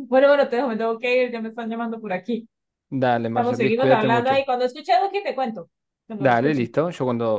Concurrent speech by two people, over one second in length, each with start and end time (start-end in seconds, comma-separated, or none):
3.3-4.5